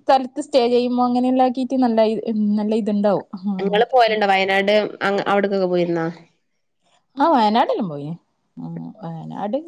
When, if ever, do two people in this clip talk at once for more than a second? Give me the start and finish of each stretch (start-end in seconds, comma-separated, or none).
none